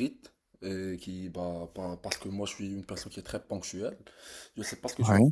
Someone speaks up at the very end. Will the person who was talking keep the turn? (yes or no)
yes